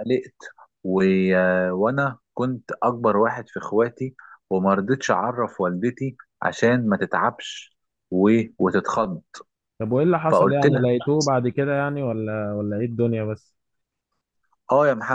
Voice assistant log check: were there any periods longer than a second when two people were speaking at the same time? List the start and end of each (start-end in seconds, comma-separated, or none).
none